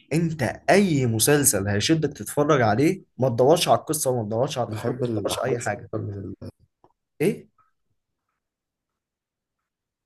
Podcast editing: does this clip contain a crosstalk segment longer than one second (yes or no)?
yes